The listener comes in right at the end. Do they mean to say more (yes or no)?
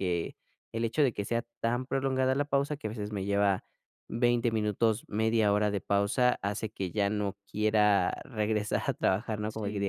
no